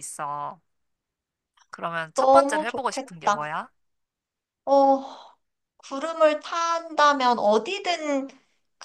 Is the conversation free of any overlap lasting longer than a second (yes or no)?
no